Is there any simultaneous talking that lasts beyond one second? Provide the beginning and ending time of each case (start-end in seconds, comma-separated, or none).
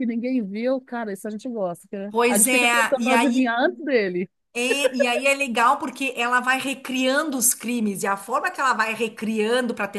2.1-3.5